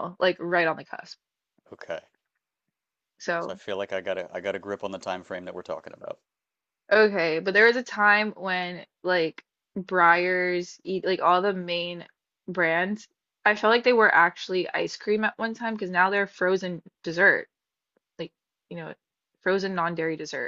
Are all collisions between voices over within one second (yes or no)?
yes